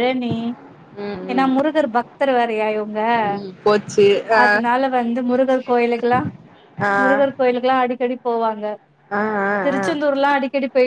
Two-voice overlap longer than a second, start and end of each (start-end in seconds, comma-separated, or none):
none